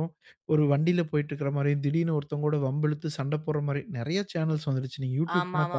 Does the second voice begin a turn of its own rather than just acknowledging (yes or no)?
yes